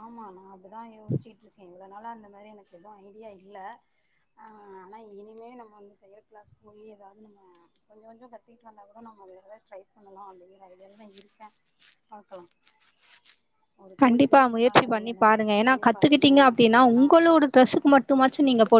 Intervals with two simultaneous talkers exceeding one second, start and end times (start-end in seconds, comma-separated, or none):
14.0-17.1